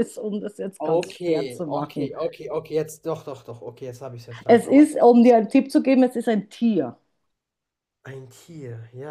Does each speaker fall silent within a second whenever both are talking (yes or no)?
no